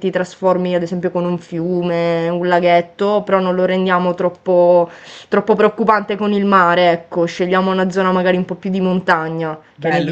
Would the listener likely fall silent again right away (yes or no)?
no